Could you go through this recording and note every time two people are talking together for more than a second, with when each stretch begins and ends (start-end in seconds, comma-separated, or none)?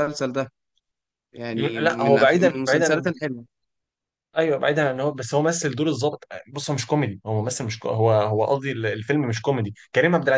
1.5-3.1